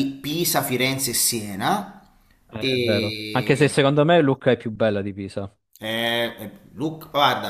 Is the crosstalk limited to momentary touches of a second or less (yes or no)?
no